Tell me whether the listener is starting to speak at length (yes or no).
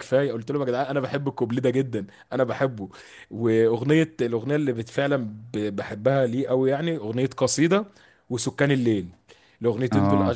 no